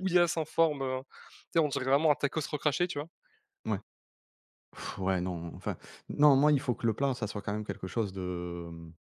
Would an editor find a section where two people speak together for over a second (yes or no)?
no